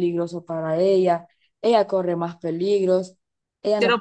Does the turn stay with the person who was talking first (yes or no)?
no